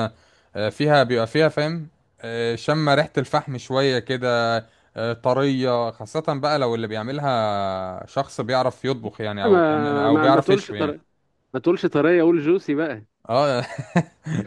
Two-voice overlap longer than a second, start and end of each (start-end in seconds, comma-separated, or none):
9.4-10.9